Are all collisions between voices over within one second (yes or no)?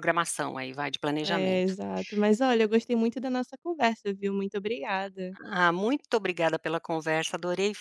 yes